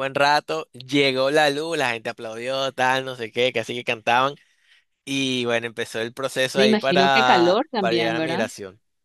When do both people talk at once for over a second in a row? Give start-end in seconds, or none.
6.6-8.5